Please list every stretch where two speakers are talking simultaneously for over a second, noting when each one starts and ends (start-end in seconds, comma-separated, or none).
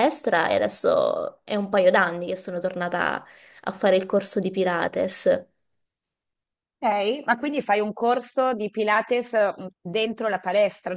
none